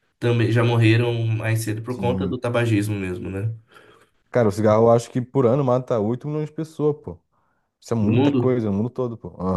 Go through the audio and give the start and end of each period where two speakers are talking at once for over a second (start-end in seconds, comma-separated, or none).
none